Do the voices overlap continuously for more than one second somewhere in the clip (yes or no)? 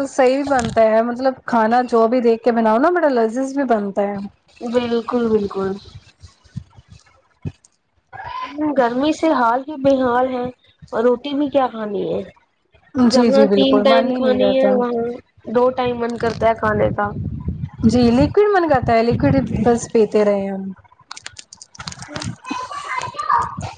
yes